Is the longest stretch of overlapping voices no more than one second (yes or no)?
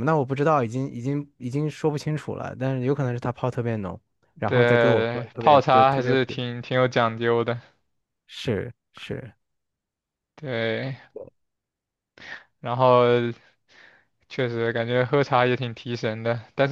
no